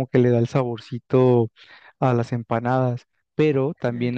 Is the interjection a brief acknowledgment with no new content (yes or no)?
yes